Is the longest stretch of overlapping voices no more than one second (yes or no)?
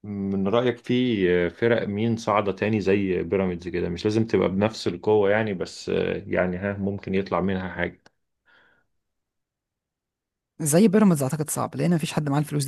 yes